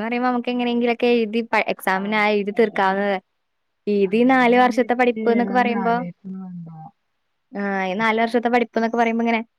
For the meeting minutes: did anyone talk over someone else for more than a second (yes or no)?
yes